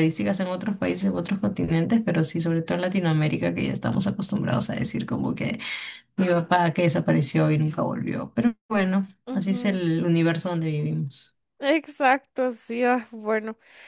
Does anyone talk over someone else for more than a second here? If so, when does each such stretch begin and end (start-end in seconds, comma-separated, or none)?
none